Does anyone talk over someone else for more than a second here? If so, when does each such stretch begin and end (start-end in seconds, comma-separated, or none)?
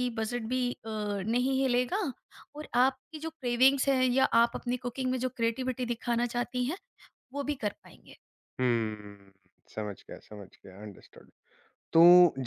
none